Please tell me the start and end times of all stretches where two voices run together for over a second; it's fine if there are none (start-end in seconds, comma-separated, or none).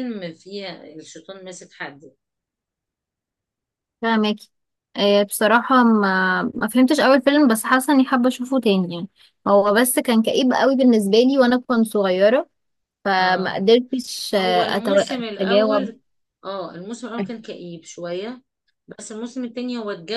14.4-15.9